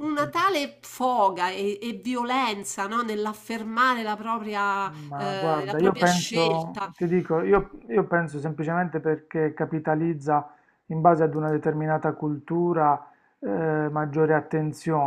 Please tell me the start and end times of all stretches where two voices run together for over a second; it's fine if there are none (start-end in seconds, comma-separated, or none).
5.1-6.9